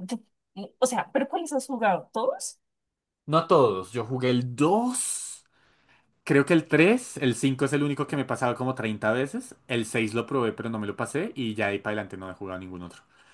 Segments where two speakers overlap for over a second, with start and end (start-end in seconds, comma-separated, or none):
none